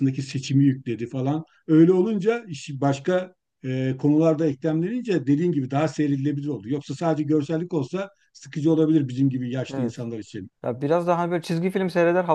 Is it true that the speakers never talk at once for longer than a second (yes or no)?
yes